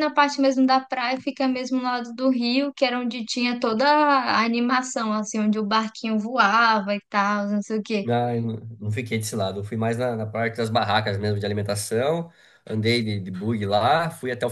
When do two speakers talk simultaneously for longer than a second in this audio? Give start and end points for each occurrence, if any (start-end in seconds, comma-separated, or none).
none